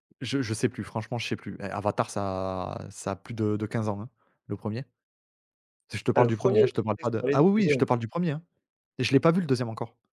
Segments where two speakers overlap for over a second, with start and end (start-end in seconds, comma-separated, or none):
6.2-7.8